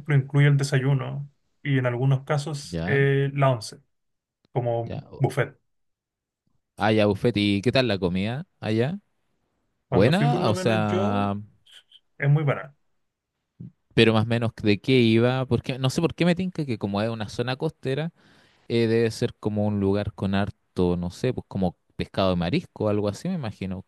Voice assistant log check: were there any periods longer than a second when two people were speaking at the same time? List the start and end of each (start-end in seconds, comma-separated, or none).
9.9-11.3